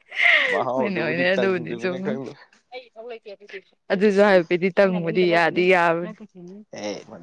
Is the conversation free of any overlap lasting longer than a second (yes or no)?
no